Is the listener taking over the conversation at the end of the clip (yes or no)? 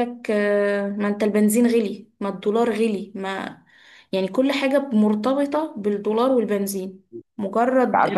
no